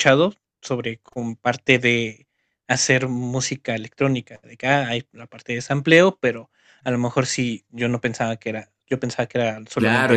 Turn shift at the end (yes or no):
yes